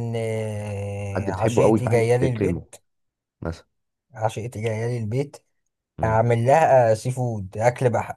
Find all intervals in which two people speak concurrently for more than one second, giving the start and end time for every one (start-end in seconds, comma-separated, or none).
1.3-2.7